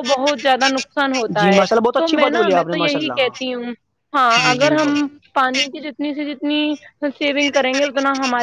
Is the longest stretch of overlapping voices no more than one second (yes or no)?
no